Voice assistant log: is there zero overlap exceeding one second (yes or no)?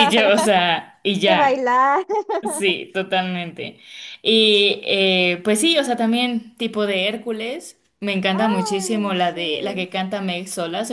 no